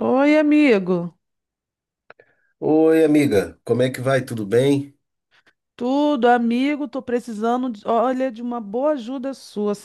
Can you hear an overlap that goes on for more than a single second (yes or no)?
no